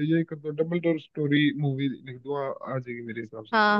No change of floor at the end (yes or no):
no